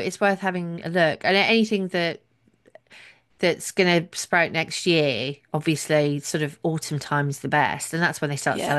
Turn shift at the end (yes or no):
no